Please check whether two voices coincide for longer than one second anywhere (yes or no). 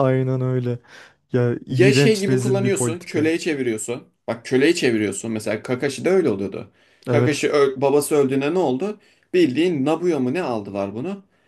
yes